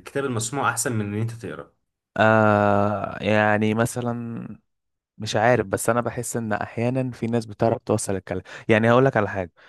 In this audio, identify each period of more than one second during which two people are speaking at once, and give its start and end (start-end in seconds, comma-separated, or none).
none